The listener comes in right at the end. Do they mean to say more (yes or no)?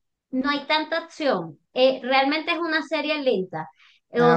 no